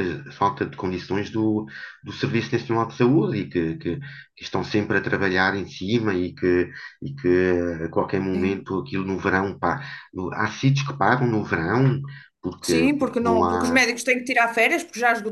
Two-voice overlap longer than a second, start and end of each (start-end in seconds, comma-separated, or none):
12.6-13.8